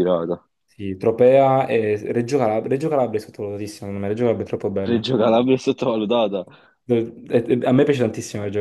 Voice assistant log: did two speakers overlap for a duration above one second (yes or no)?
no